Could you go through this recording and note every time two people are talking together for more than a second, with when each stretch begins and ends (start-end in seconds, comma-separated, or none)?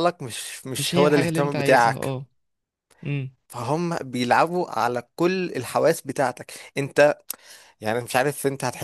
0.8-2.2